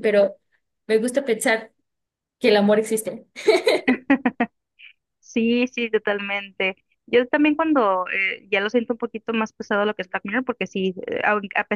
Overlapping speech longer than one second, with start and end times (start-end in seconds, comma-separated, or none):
none